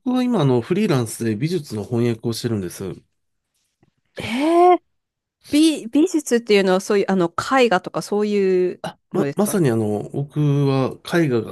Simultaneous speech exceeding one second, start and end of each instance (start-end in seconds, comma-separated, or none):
none